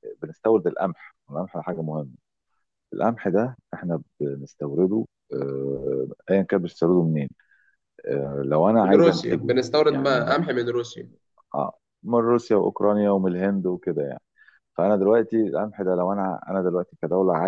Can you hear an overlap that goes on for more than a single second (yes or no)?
yes